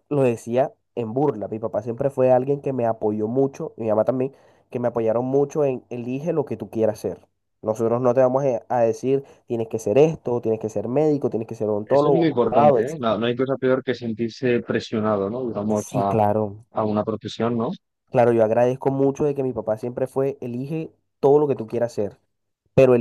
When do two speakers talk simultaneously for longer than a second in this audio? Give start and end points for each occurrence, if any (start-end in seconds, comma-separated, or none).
11.8-13.2